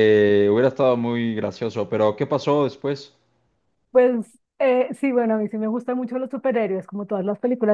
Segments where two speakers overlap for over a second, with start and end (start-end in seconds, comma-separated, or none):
none